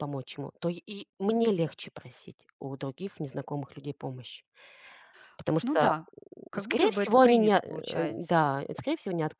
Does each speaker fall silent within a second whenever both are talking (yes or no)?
no